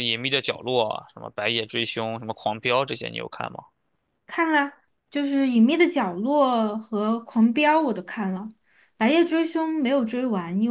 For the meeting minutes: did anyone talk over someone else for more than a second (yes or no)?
no